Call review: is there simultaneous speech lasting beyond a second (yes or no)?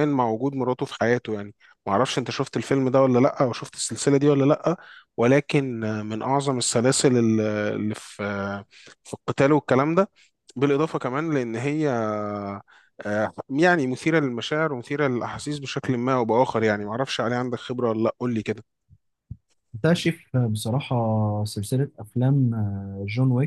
no